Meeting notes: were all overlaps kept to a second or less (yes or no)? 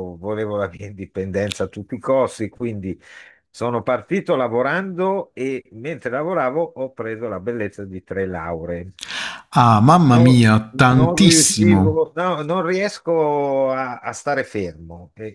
no